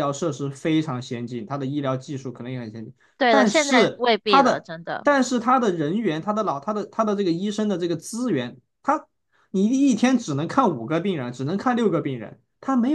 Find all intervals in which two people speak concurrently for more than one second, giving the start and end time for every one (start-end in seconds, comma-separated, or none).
3.2-5.1